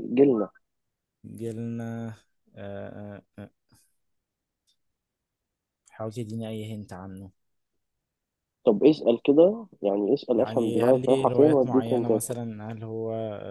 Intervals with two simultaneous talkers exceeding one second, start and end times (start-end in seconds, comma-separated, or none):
10.4-12.1